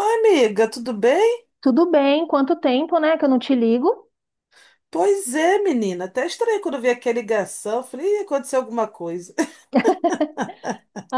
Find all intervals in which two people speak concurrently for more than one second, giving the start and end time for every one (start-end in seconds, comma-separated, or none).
none